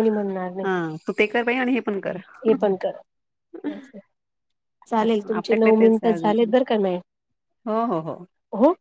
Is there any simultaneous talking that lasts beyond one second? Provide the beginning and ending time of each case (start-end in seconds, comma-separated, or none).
5.0-6.5